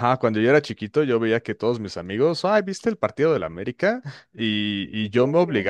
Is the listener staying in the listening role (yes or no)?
yes